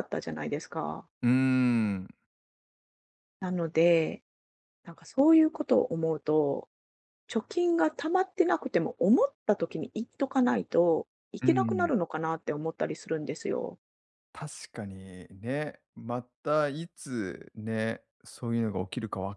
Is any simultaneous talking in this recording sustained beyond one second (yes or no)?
no